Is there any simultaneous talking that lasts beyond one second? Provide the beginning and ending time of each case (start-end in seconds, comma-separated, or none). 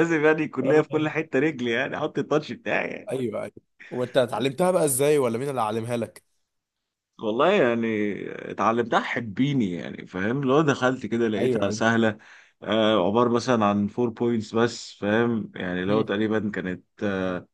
none